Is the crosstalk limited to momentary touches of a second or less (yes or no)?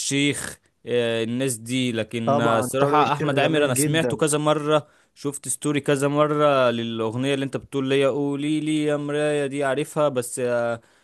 no